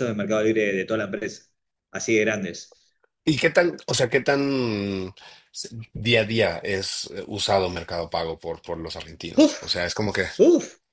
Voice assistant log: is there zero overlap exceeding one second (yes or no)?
yes